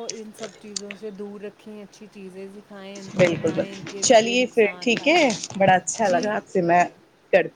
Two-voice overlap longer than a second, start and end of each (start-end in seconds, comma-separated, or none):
3.2-5.2